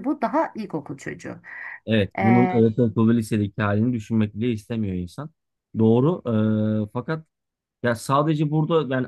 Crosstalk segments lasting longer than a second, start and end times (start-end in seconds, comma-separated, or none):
none